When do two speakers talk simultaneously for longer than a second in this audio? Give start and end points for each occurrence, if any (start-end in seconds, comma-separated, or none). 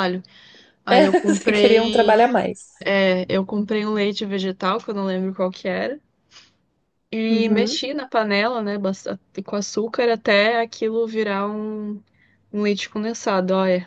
0.9-2.2